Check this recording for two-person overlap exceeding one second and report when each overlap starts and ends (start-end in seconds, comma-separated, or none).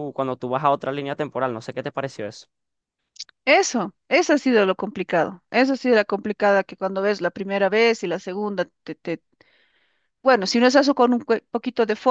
none